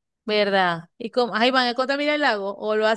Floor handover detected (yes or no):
yes